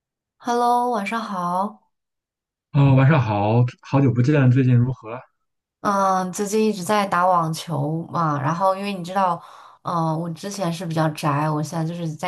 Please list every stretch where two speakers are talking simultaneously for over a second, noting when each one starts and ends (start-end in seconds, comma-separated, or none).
none